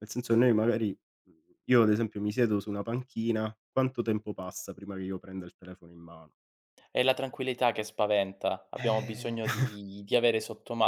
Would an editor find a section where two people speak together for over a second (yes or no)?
no